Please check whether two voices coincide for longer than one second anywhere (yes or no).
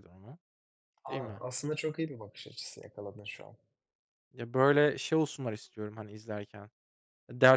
no